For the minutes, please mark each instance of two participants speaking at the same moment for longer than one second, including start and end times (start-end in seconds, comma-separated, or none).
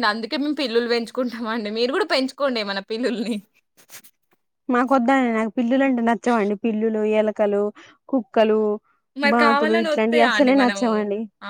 9.3-10.9